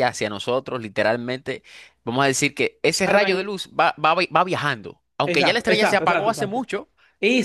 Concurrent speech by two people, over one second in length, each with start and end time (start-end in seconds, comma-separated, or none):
5.2-6.6